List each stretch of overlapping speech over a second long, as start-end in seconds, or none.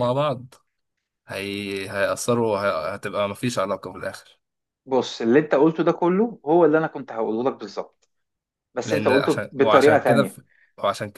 8.8-10.4